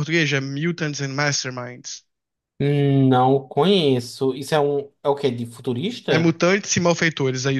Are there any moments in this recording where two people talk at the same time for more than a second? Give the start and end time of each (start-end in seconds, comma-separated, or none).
none